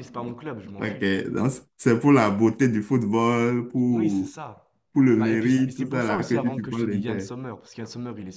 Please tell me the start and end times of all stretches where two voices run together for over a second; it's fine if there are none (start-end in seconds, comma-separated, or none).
5.2-7.3